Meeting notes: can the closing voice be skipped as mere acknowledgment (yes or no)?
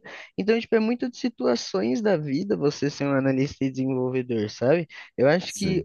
yes